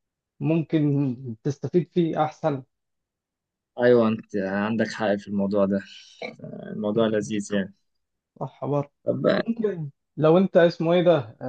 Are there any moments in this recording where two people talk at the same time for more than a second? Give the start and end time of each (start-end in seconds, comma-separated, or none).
none